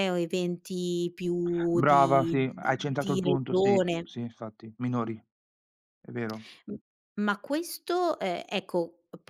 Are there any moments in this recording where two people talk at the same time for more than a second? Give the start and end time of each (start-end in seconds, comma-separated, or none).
1.7-4.1